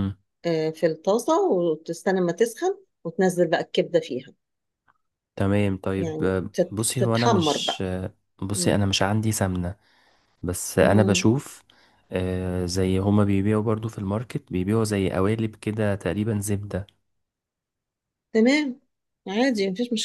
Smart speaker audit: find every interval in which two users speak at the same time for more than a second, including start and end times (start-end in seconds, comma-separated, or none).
6.0-7.8